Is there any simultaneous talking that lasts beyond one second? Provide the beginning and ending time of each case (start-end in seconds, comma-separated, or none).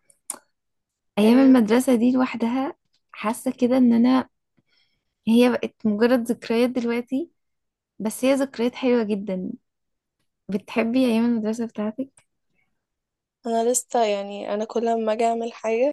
none